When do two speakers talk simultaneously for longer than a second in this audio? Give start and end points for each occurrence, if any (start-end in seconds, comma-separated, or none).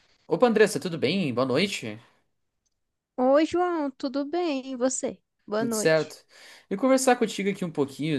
none